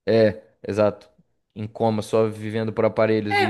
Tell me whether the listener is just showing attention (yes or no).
no